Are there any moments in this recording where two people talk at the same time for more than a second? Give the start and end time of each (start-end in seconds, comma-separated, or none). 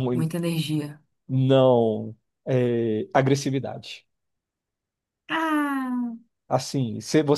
none